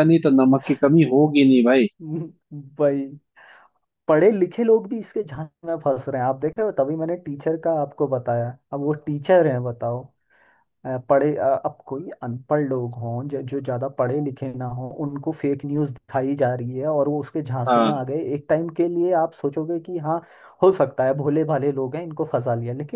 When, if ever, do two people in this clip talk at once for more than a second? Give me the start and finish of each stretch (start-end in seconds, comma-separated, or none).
none